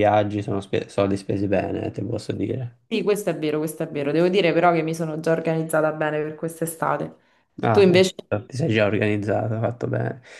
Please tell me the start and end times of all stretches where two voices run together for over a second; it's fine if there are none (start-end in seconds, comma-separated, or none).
none